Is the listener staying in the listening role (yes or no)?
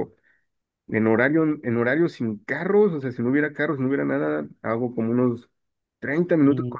yes